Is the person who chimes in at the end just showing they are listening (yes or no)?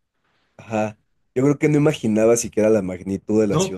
no